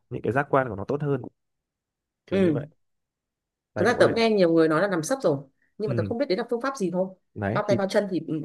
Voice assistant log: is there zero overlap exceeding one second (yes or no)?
yes